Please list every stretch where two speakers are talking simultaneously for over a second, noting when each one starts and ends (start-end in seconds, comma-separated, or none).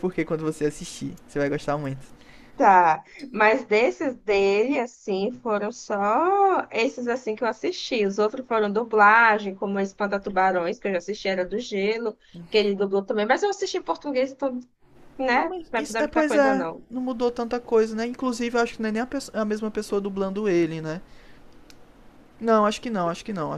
15.3-16.9